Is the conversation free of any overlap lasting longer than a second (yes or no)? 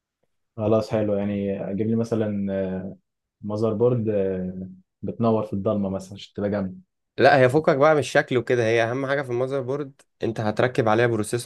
yes